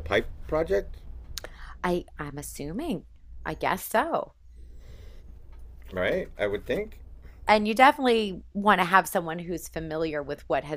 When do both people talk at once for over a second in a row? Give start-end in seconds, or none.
none